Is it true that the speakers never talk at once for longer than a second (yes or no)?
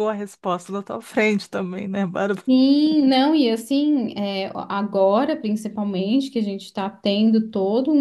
yes